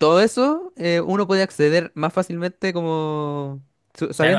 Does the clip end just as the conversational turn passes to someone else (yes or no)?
yes